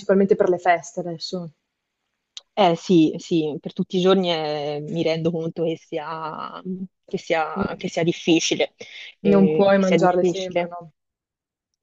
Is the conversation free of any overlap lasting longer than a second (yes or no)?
no